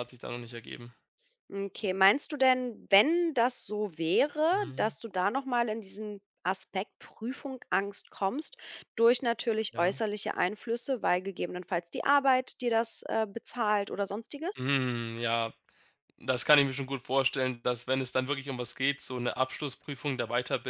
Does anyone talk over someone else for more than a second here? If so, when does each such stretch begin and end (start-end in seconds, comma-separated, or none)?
none